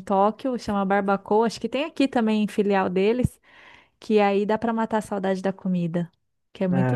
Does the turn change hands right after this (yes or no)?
yes